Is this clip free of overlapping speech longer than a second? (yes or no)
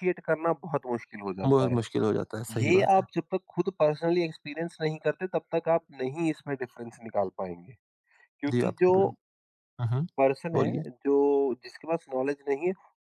yes